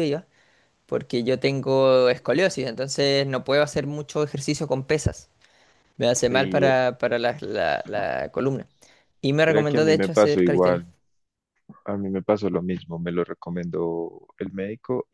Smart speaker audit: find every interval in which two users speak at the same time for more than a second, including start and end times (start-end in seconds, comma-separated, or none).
9.4-10.8